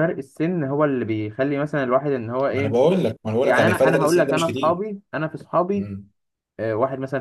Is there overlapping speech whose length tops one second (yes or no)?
yes